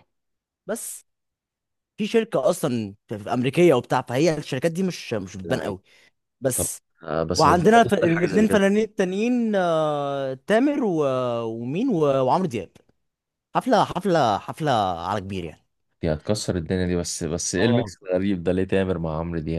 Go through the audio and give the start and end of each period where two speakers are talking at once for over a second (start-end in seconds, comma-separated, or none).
7.3-8.6